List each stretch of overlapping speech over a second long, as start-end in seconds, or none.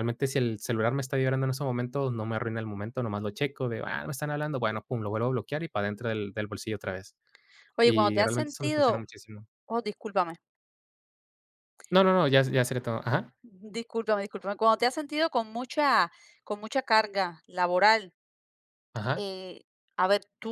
7.8-9.0